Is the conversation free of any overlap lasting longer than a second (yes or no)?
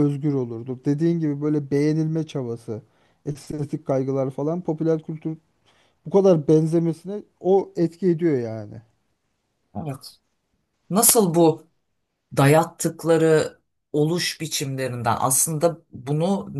yes